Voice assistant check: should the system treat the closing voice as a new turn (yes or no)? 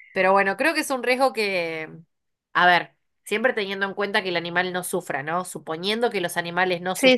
no